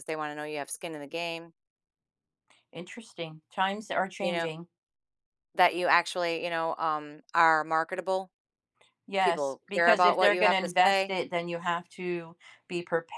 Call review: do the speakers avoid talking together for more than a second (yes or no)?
no